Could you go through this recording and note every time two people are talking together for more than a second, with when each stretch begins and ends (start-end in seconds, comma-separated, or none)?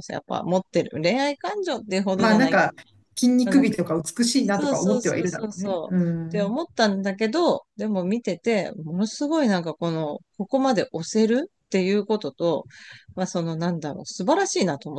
4.4-6.5